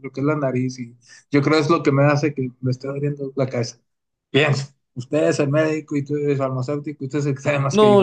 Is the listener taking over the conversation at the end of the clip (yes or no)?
yes